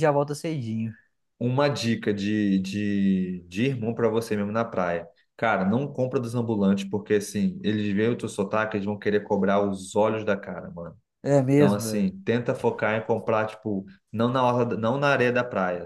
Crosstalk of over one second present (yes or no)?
no